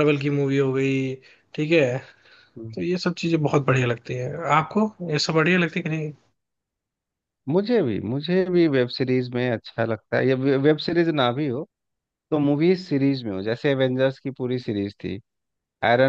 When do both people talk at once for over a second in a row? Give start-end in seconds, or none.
none